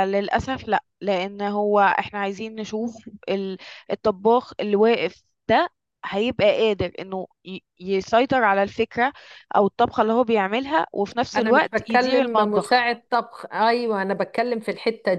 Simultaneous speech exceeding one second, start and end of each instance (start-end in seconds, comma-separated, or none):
11.3-12.9